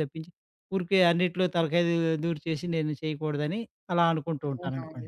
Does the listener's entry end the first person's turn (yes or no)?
yes